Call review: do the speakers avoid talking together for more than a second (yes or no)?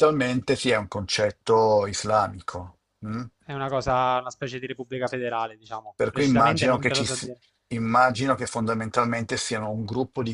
no